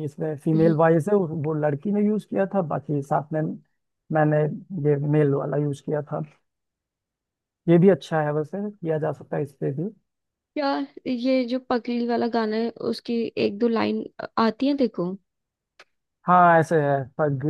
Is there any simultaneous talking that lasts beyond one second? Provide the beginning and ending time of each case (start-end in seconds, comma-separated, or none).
none